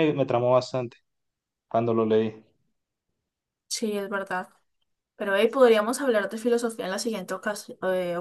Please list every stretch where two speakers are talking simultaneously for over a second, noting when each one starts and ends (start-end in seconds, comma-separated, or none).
none